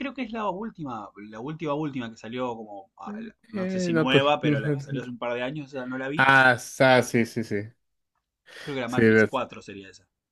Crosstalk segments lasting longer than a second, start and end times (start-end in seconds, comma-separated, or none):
3.5-5.1